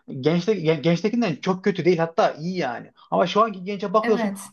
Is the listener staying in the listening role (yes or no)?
yes